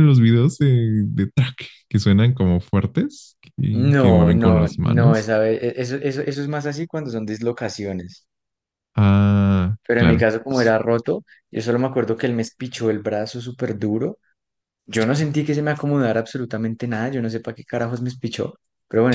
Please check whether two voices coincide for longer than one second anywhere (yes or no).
yes